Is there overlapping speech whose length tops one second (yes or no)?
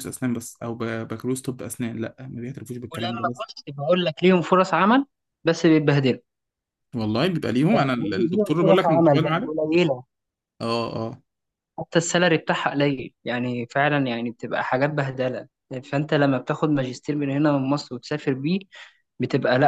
yes